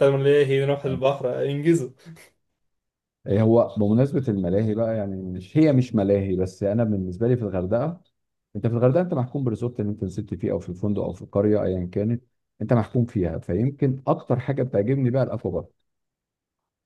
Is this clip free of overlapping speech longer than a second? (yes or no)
yes